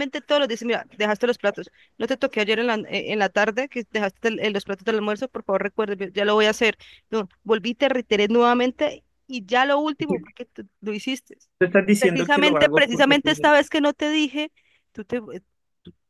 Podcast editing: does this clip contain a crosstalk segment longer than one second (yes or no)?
yes